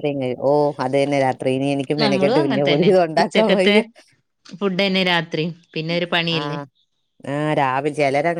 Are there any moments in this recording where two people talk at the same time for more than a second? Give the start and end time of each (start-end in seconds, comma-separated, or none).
2.0-3.7